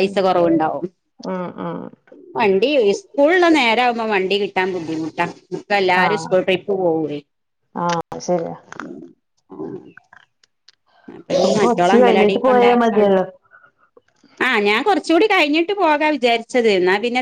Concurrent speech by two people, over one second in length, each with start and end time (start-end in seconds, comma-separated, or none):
11.5-13.2